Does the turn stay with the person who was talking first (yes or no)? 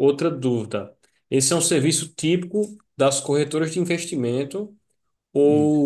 yes